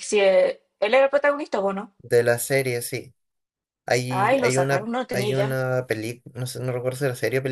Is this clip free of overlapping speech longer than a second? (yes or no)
no